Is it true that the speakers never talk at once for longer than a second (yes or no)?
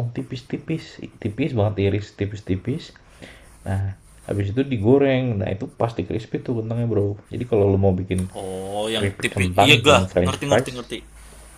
no